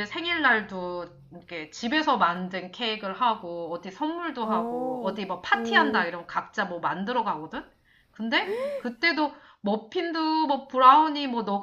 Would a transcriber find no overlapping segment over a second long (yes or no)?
no